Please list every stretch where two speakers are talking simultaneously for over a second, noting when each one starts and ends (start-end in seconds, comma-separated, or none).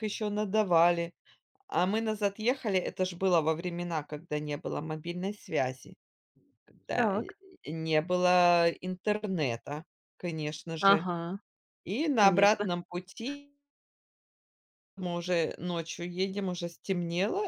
none